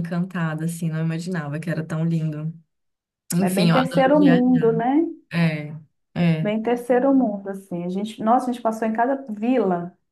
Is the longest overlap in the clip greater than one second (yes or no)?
yes